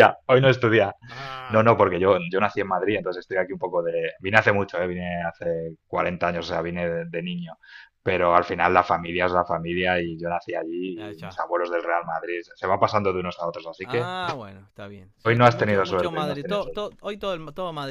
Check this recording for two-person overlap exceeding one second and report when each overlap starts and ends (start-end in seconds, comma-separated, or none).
15.3-16.9